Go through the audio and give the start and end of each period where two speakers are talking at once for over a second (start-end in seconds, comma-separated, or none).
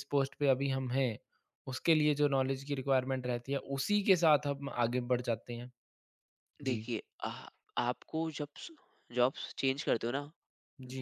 none